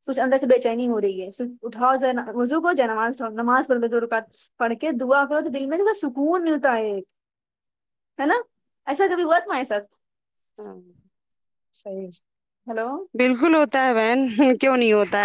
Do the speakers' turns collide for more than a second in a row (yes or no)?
no